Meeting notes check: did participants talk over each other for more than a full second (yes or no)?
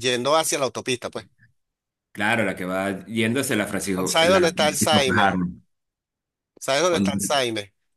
yes